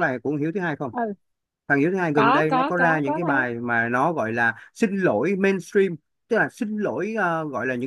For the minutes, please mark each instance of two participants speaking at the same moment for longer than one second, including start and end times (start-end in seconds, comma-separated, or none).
2.1-3.5